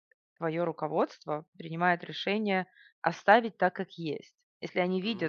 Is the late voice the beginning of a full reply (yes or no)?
no